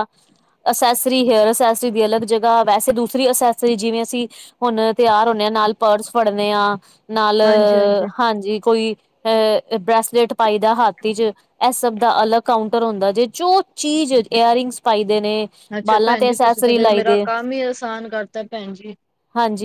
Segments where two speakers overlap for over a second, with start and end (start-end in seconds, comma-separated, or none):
15.9-17.2